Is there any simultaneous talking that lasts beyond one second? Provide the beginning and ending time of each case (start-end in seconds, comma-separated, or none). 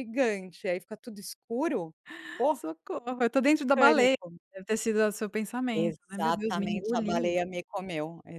5.7-7.4